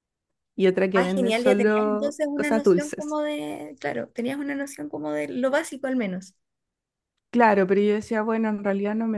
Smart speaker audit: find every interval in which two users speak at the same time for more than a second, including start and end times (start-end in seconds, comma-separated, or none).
0.9-3.2